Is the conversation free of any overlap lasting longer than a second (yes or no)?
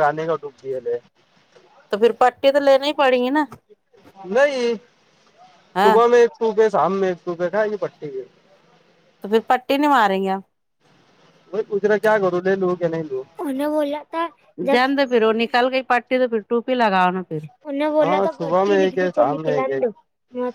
no